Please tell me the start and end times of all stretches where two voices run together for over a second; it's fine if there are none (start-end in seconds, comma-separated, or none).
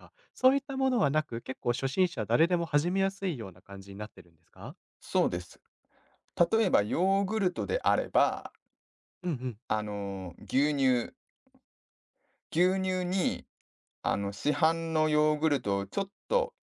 none